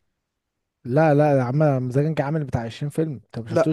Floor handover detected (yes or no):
no